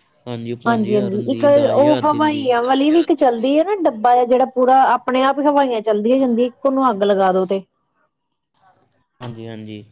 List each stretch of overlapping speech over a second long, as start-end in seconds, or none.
none